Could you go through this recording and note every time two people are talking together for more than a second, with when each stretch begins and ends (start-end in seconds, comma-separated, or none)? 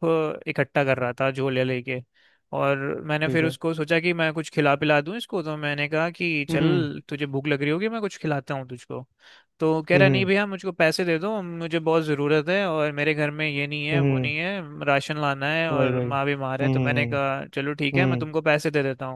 15.7-17.0